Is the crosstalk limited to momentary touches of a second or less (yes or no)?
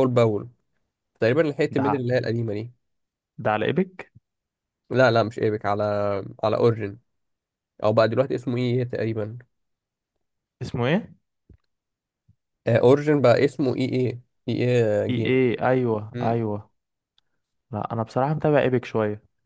yes